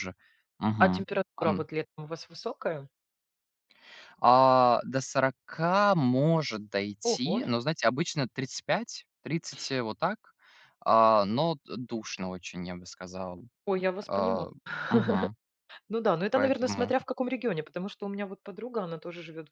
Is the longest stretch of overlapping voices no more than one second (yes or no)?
yes